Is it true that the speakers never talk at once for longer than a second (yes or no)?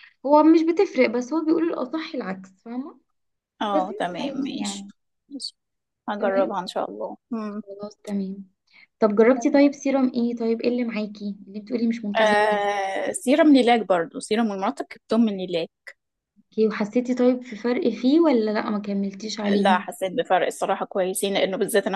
no